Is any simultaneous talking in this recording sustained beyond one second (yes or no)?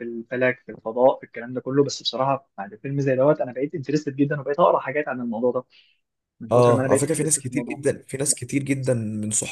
yes